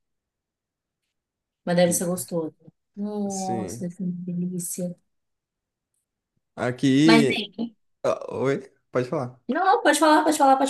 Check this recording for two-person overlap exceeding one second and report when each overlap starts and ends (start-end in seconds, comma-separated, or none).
none